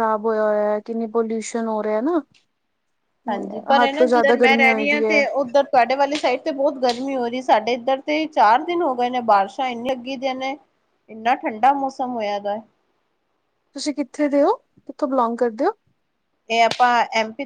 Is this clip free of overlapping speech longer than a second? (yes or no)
no